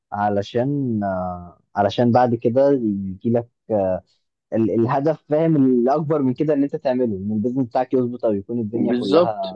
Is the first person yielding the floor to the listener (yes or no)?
yes